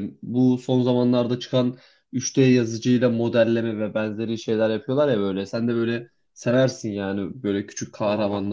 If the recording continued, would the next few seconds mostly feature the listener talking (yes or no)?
no